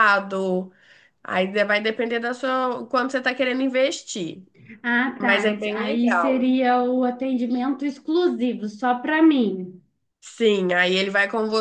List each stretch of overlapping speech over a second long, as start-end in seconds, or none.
5.2-6.5